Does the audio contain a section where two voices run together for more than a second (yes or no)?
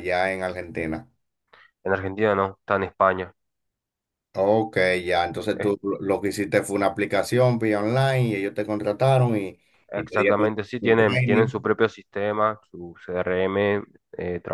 yes